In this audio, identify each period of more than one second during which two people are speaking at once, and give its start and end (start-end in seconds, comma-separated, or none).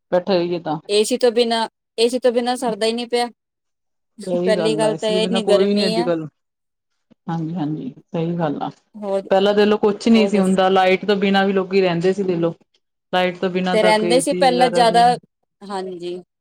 4.4-6.1